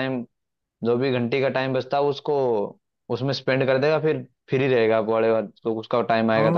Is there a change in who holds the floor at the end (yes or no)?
yes